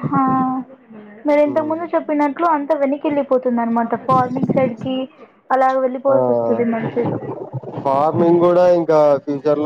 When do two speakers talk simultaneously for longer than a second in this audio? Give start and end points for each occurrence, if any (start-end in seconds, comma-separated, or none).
none